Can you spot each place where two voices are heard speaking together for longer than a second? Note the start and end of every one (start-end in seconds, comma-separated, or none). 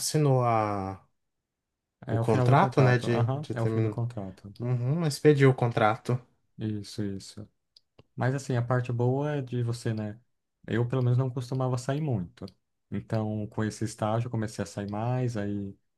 2.1-4.0